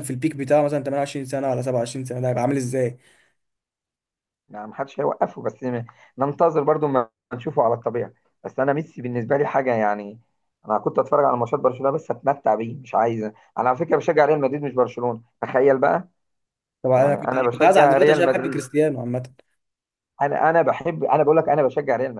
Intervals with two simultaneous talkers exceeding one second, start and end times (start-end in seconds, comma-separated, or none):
16.9-18.6